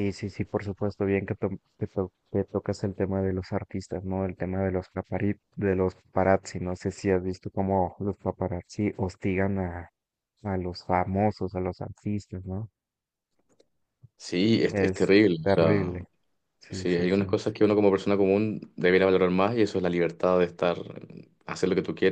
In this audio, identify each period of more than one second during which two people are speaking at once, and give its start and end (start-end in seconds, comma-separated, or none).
14.7-16.1